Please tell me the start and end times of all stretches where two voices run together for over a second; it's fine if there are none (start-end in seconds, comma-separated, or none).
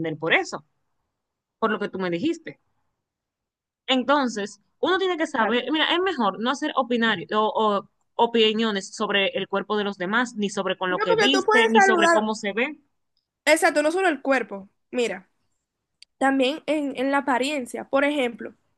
10.9-12.3